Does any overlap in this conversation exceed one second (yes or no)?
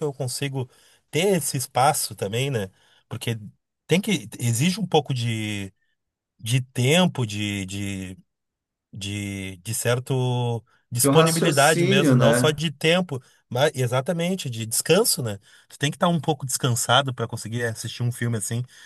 yes